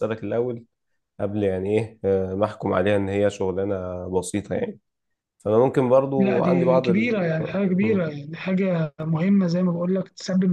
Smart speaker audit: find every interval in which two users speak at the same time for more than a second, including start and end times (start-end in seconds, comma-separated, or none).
6.2-8.1